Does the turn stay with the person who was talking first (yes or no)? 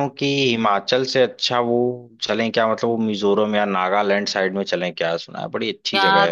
no